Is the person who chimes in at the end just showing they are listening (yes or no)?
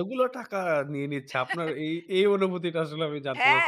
no